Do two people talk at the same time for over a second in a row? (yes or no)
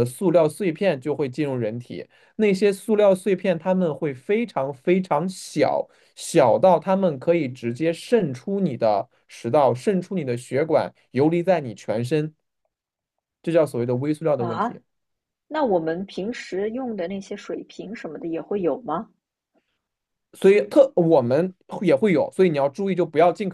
no